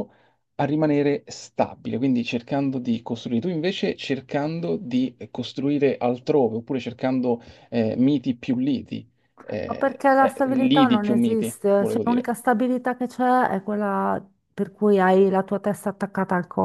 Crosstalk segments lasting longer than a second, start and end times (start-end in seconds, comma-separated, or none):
9.6-12.3